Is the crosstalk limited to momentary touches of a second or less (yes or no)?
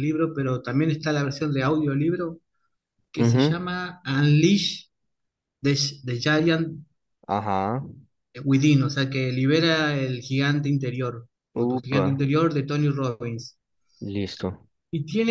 yes